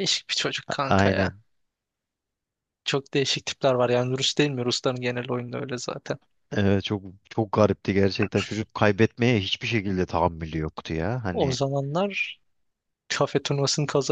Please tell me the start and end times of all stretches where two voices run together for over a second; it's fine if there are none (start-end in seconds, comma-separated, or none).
none